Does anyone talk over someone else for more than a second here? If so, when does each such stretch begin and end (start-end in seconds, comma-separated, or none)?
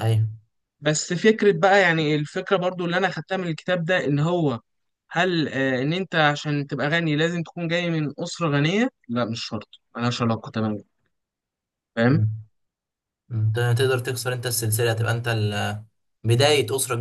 none